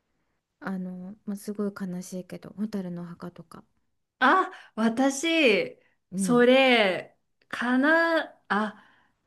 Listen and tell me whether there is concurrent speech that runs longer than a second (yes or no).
no